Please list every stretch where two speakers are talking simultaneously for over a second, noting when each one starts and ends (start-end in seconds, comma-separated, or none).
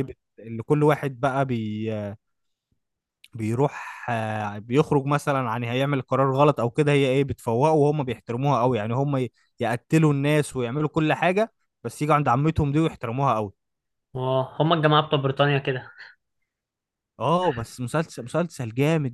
none